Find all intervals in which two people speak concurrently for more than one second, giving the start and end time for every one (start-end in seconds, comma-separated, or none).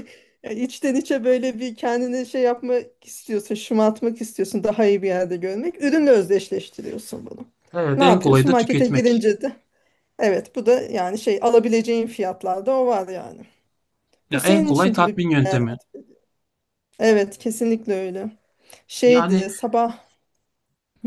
8.0-9.2, 14.3-15.6